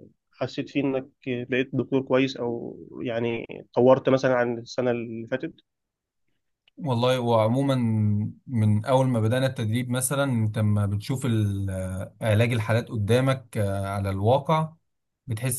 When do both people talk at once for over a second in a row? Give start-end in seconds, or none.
none